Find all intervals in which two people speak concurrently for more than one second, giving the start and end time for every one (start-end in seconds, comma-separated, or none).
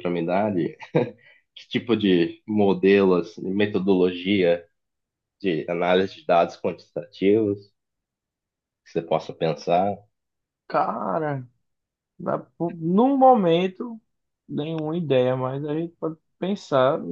none